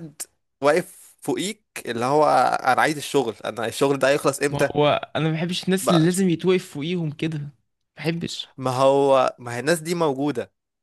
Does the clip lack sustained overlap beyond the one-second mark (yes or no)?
yes